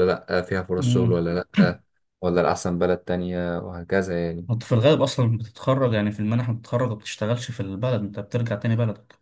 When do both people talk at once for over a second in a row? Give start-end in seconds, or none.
none